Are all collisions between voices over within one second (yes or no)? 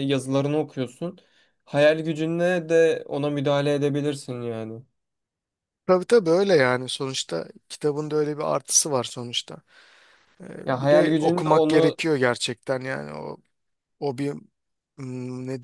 no